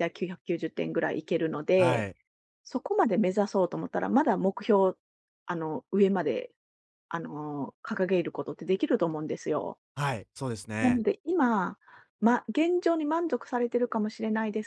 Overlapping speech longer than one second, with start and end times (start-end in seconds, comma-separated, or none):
none